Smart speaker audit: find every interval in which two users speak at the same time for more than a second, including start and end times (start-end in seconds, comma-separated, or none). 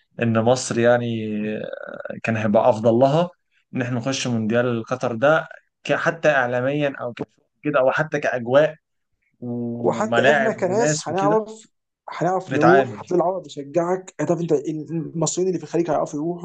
9.7-11.4